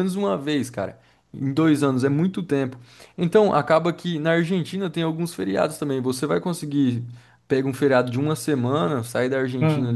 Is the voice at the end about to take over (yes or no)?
no